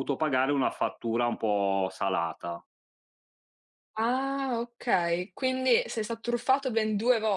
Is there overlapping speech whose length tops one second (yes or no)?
no